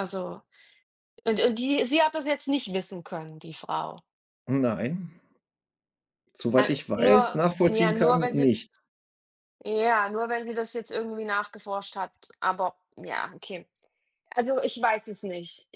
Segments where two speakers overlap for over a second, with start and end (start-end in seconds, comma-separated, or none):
6.5-8.5